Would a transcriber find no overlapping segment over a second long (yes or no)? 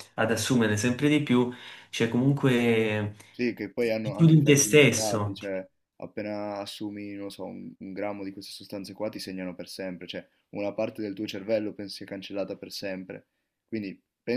no